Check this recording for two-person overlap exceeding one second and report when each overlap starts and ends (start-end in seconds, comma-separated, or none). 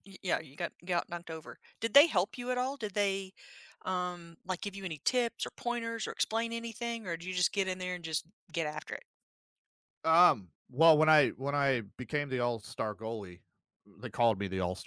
none